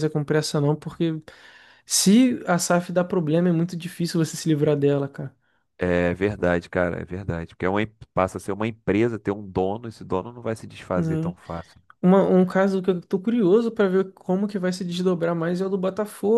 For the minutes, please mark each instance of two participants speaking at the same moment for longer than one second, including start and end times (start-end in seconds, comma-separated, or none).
none